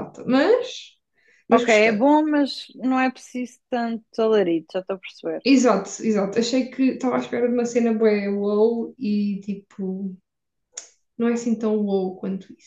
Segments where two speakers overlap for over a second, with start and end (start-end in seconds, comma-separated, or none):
none